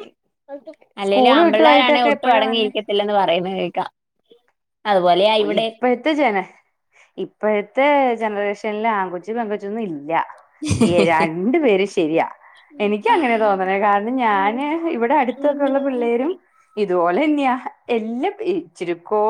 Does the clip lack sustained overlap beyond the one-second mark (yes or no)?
no